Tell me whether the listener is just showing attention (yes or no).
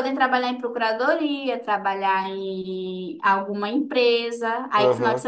yes